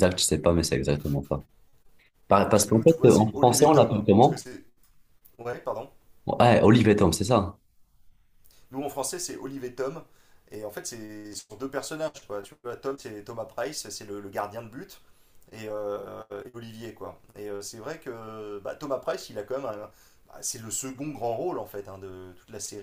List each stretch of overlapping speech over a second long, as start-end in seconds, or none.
2.5-4.5